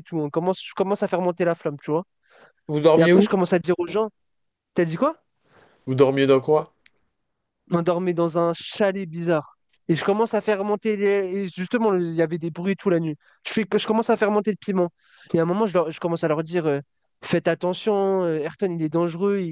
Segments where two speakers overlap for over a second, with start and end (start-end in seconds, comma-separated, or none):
none